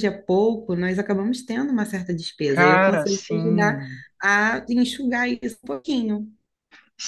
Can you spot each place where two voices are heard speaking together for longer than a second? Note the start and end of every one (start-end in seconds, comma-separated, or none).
2.5-3.8